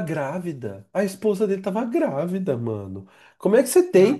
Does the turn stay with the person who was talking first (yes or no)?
yes